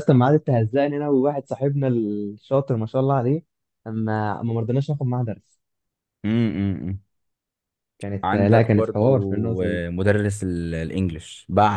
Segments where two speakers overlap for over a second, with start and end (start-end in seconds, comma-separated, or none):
8.2-9.8